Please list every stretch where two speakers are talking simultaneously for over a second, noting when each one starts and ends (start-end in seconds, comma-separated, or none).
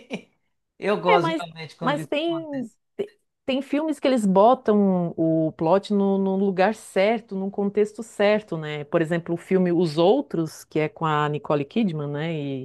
1.1-2.8